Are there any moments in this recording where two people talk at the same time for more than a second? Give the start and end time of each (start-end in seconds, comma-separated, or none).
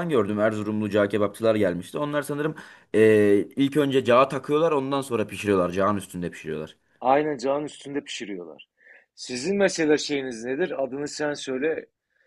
none